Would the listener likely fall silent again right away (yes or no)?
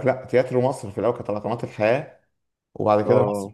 yes